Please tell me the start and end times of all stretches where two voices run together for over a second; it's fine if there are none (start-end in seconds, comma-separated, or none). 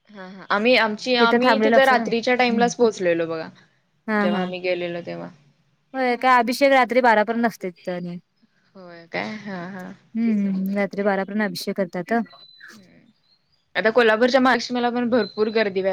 1.4-2.7